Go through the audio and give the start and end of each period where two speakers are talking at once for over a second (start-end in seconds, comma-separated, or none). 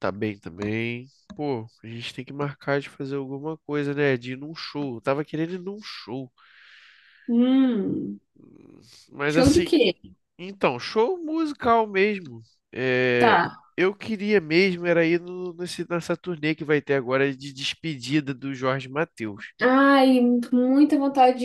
none